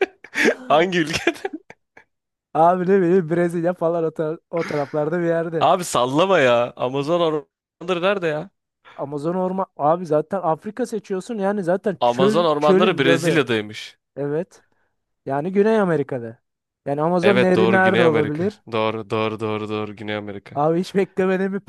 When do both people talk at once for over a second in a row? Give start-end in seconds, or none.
12.0-13.4, 17.2-18.6